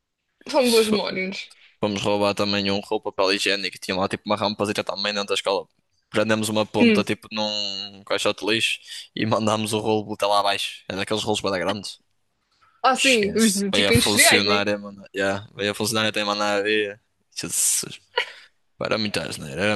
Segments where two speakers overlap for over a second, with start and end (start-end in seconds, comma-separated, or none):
12.9-14.6